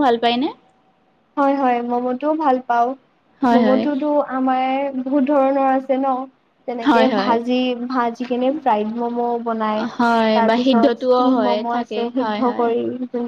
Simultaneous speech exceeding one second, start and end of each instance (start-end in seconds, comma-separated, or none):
10.4-12.7